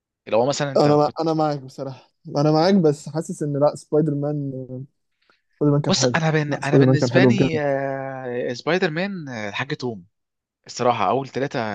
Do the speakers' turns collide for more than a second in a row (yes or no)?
yes